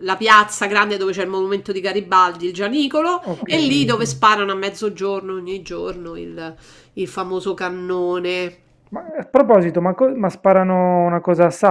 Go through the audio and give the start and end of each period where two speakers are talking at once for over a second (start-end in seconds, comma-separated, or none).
none